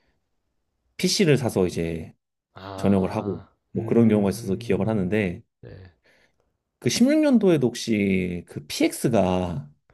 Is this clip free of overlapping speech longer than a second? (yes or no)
no